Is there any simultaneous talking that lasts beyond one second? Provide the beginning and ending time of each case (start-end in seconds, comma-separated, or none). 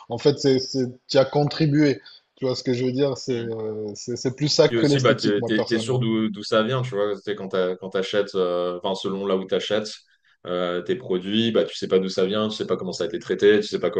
4.7-6.0